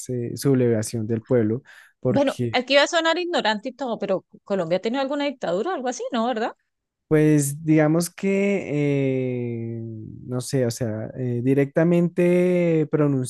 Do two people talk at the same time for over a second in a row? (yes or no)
no